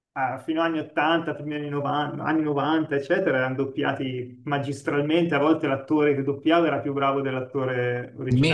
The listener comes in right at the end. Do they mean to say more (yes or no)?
yes